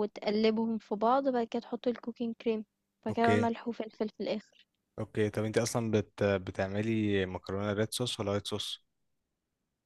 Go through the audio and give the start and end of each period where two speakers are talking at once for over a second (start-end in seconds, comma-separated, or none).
none